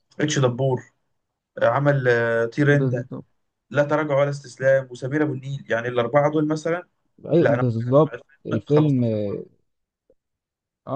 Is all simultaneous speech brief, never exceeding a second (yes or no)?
no